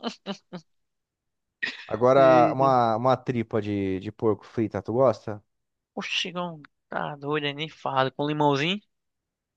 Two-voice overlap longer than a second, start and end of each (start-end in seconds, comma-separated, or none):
none